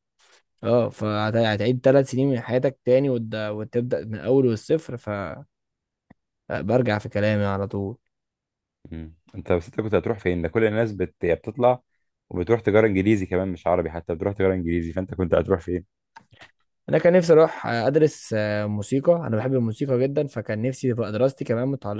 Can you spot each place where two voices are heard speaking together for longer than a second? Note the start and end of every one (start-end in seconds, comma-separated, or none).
none